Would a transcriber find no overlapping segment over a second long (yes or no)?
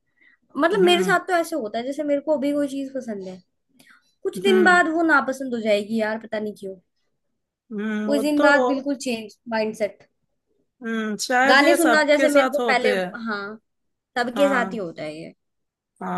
no